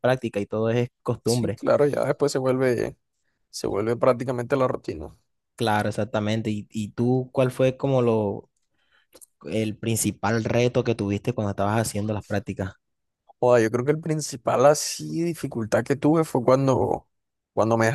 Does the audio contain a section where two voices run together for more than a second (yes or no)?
no